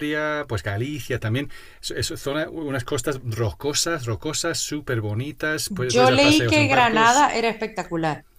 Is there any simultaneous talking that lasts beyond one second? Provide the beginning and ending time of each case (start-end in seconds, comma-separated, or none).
5.7-7.3